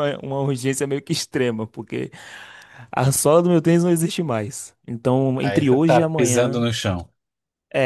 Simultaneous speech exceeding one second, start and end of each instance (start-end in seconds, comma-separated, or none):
5.4-6.7